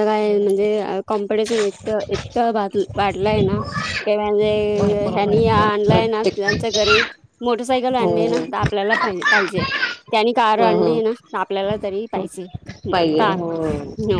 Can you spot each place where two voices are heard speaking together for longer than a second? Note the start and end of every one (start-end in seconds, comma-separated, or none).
4.8-6.5